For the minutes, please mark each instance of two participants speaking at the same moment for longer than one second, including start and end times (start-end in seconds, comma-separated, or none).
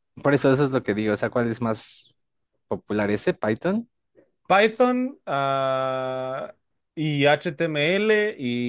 none